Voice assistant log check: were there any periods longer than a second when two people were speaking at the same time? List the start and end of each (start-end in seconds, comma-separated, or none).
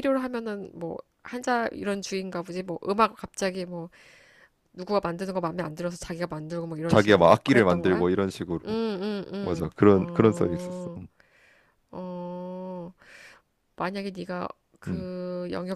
6.9-8.1, 9.4-11.0